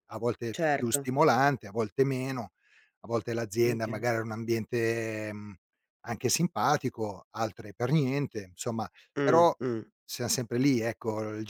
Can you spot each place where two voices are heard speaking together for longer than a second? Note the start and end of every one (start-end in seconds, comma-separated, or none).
none